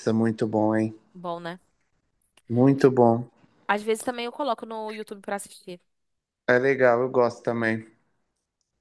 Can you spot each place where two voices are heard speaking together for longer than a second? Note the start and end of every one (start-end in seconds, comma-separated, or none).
none